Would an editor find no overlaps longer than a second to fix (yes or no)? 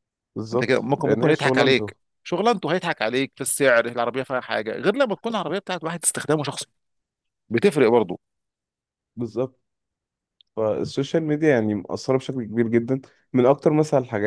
no